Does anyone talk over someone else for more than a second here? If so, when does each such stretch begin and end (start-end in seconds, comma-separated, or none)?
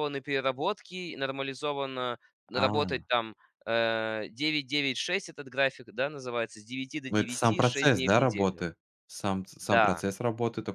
7.1-8.6